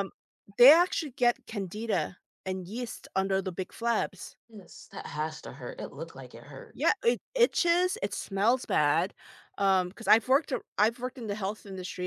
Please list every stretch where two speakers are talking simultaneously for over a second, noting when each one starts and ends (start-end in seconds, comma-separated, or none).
none